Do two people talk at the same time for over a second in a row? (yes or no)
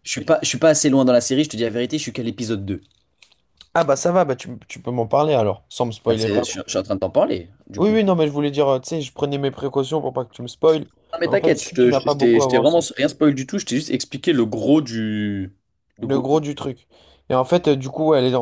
yes